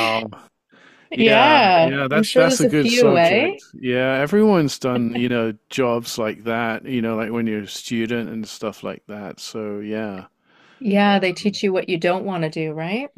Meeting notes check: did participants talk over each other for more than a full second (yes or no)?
yes